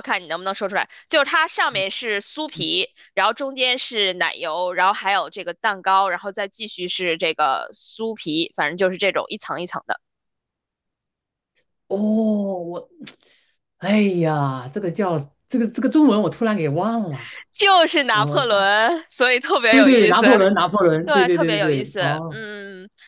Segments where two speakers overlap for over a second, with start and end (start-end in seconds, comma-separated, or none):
21.0-22.5